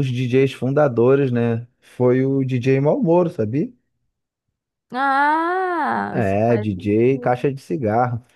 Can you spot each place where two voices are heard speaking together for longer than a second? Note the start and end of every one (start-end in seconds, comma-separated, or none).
6.1-7.5